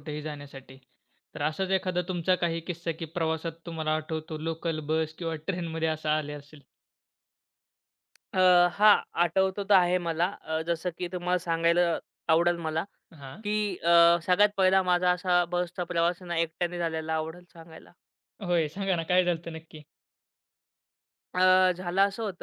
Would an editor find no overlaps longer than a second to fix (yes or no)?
yes